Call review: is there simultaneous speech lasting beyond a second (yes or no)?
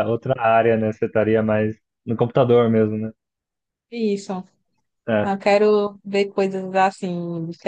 no